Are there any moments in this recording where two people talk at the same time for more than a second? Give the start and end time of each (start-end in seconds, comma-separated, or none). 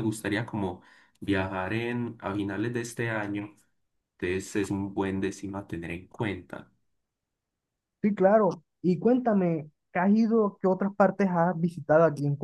none